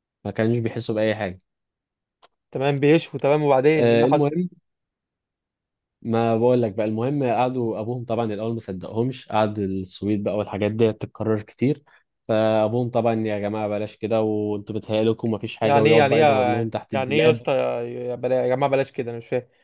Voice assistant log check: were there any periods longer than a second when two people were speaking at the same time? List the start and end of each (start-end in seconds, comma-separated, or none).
15.6-17.4